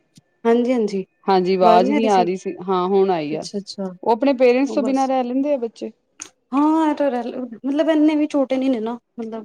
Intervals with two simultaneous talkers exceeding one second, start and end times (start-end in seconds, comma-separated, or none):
none